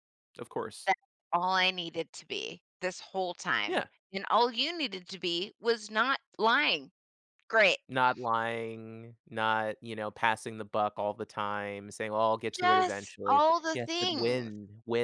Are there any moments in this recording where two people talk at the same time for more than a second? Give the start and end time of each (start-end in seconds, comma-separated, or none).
12.6-14.5